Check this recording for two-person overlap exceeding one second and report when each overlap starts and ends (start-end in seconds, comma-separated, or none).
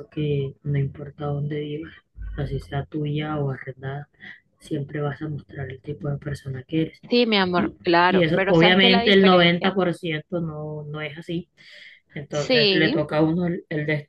7.6-9.7